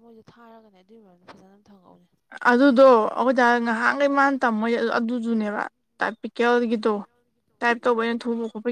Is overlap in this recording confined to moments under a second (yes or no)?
yes